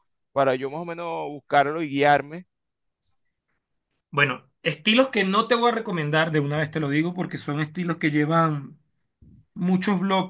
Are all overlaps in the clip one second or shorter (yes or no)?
yes